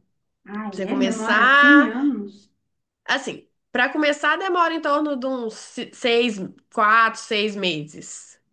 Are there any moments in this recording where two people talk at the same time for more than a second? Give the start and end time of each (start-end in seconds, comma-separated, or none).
0.7-1.9